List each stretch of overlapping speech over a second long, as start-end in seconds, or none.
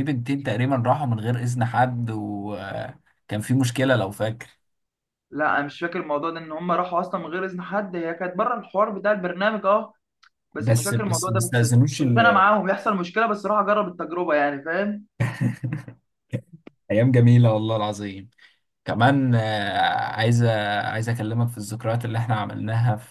10.6-12.4